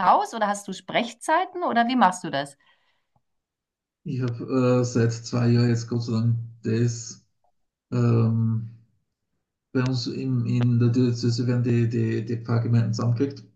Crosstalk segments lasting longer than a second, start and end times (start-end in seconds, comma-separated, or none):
none